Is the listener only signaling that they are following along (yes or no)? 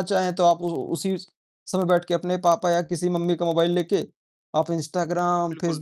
yes